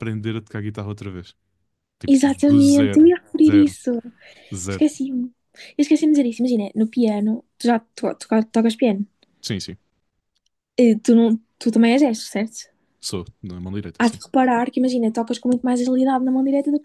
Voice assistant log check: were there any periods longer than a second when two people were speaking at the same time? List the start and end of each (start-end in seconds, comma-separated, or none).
2.1-3.8